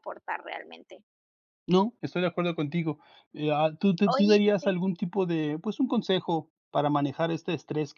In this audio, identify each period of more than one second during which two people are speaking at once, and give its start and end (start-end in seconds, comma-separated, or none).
none